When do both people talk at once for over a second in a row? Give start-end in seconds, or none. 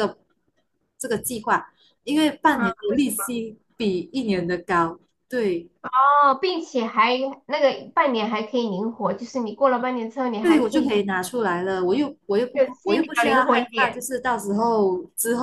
12.5-14.0